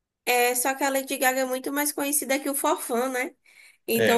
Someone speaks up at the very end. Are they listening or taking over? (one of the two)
listening